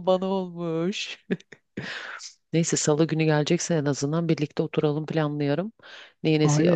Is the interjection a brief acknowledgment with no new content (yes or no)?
no